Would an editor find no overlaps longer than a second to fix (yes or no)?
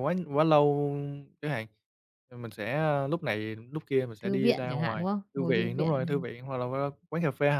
no